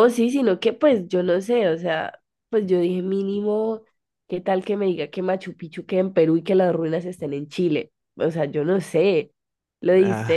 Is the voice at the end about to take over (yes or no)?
no